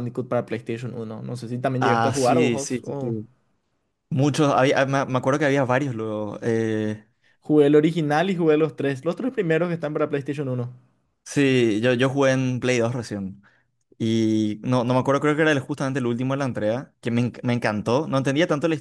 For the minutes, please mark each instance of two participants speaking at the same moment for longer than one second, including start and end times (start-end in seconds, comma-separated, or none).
1.8-3.1